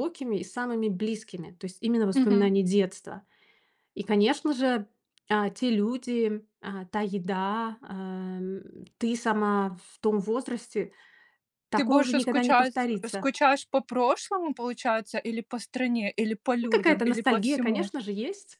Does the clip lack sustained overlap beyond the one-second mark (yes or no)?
no